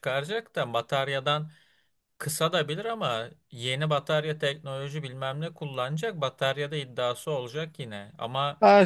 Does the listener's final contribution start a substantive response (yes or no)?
yes